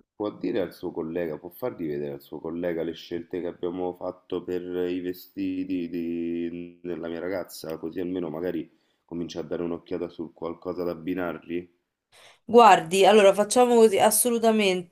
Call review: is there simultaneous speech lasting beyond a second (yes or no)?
no